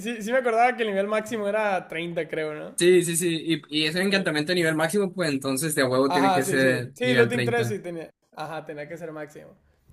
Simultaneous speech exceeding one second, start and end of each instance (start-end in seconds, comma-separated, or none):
6.1-7.8